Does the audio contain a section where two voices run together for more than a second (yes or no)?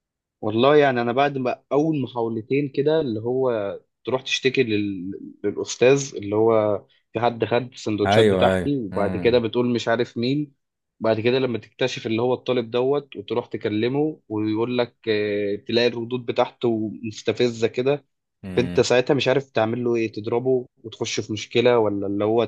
yes